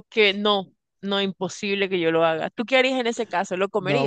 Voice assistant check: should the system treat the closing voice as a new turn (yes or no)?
yes